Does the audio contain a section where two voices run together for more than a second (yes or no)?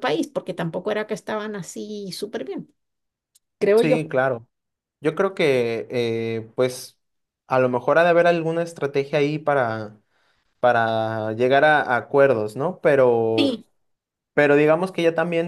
no